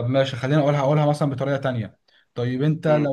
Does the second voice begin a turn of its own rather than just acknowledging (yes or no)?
no